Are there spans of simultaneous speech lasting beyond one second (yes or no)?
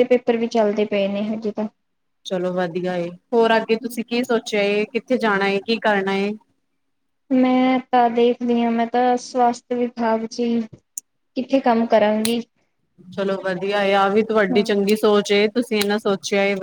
no